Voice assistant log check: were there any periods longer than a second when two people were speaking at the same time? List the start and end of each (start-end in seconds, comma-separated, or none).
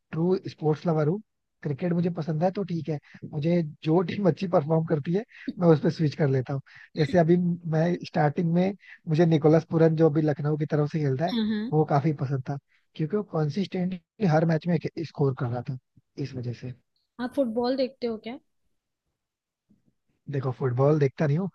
none